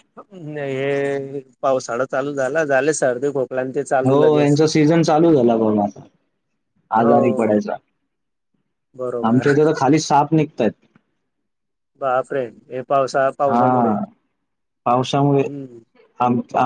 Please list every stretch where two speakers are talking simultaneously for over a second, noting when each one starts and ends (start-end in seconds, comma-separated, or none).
none